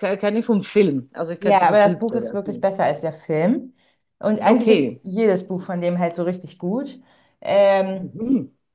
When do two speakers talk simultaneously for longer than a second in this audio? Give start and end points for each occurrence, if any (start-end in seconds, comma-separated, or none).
1.4-2.7